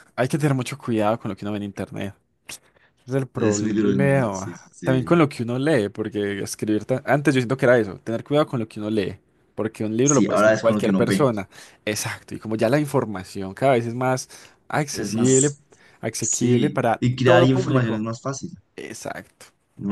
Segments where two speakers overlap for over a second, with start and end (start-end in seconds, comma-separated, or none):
3.4-5.2, 10.0-11.3, 16.2-18.0